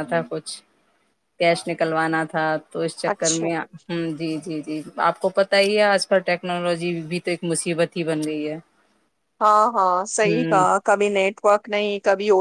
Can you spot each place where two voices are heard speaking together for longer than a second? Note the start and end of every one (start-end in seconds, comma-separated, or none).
none